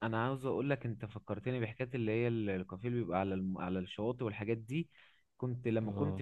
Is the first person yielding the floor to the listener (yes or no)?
no